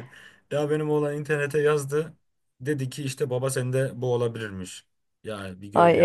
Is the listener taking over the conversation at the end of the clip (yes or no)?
yes